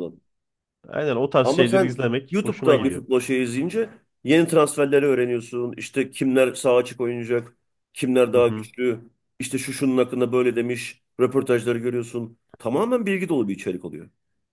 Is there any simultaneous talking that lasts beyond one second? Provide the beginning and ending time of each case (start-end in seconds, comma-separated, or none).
1.4-3.0